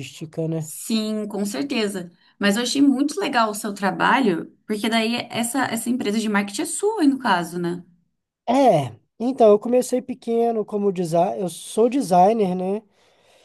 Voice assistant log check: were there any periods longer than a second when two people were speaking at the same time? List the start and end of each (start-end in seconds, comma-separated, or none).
none